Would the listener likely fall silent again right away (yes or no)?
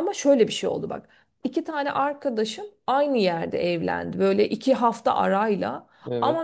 yes